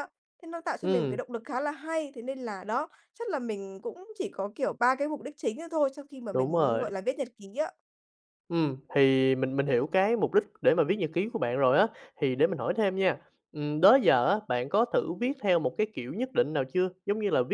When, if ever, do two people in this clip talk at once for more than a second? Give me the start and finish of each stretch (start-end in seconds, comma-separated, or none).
none